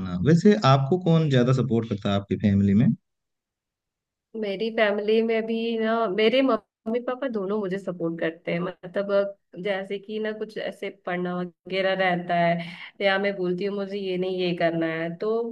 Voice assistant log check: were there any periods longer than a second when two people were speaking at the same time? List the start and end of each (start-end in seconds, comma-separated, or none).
none